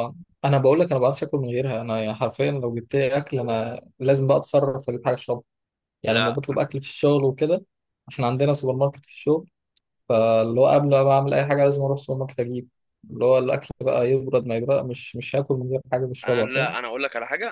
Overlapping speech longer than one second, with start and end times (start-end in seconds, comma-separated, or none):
none